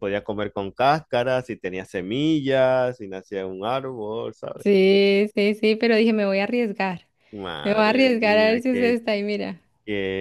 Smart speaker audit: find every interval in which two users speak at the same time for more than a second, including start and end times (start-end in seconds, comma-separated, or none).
7.6-9.0